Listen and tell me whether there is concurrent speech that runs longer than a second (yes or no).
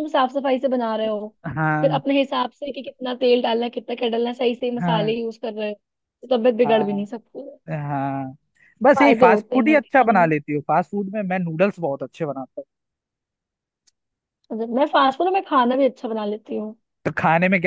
yes